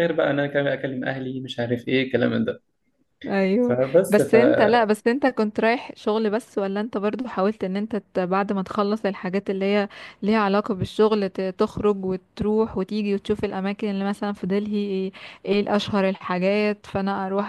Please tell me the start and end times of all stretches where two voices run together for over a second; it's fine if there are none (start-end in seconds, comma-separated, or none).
none